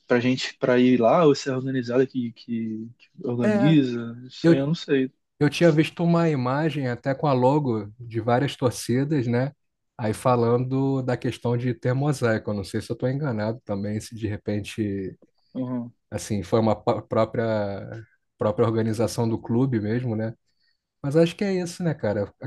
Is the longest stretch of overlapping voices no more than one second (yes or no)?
yes